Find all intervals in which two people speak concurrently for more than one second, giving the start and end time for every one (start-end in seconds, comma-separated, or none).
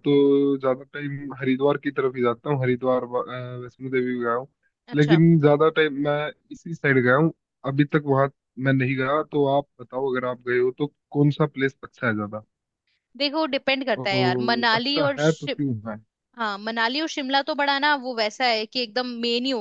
14.0-15.5